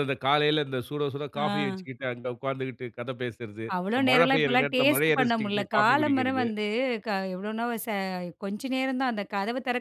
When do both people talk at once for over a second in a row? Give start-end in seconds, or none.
3.8-6.5